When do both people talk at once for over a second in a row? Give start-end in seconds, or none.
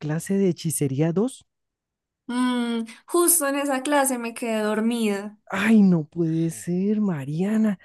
none